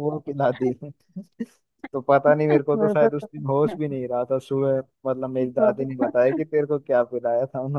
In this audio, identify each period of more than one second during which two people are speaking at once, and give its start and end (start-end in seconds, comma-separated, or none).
2.5-4.0